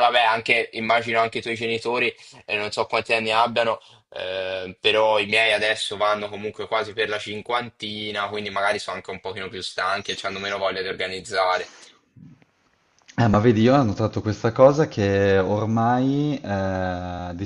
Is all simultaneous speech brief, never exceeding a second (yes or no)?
yes